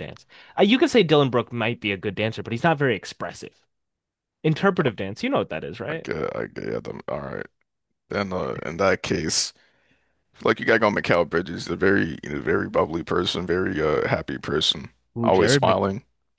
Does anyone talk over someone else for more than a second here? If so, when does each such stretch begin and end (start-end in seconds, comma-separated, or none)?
none